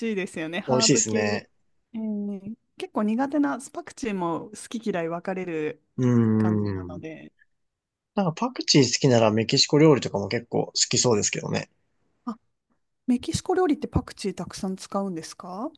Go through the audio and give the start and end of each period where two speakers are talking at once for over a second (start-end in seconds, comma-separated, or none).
none